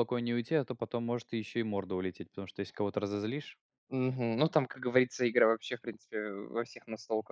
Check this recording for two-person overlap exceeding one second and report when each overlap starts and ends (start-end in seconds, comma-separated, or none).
none